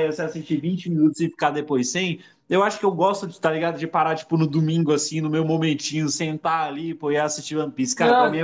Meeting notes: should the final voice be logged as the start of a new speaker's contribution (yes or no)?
yes